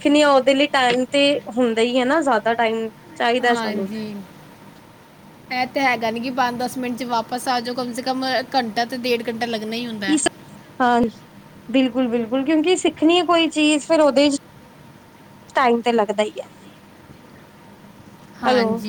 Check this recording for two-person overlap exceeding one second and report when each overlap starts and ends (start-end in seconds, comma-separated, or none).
none